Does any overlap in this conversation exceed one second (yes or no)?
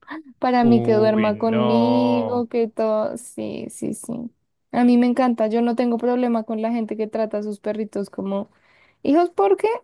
yes